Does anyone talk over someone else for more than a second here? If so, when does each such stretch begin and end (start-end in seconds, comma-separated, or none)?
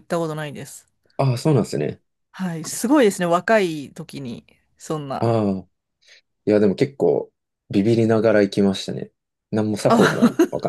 none